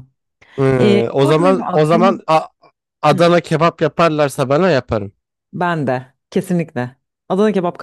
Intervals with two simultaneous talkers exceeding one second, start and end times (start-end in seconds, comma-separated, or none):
0.8-2.2